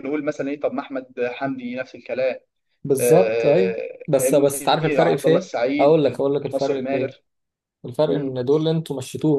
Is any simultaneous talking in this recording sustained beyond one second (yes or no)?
yes